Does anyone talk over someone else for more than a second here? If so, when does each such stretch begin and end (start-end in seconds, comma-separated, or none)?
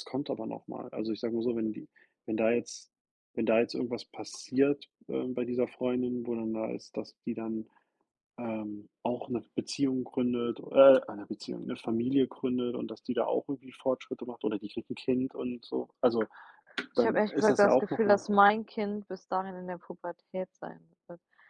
16.9-18.3